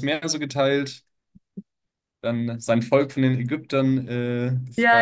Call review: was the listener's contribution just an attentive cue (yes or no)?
no